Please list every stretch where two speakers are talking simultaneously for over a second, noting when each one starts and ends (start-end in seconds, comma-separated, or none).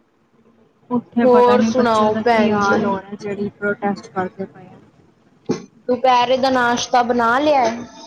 1.2-2.7